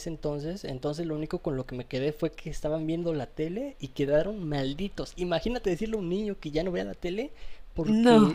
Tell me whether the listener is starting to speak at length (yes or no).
no